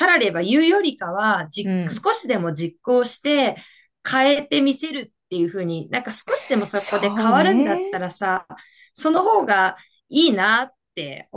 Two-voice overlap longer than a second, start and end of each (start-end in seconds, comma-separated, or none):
6.7-8.1